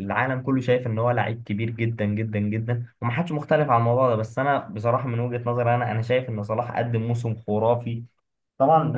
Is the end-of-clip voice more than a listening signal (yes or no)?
no